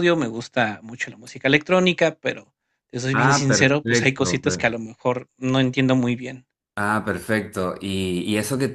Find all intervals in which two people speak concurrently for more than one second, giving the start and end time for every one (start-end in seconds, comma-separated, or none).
3.1-4.7